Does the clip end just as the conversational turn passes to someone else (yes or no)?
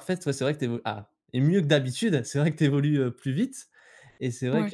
no